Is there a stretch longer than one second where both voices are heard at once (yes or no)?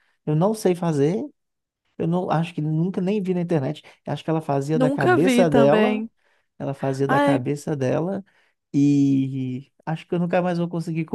yes